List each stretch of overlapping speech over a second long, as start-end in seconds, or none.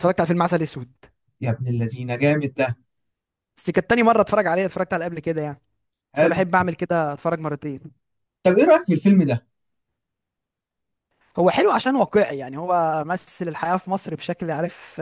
none